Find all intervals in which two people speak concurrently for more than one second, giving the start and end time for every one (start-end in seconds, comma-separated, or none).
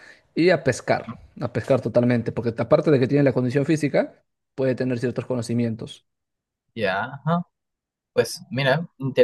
none